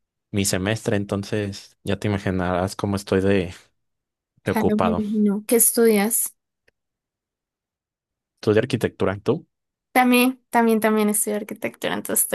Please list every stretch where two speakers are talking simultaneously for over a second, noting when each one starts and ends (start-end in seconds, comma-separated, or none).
none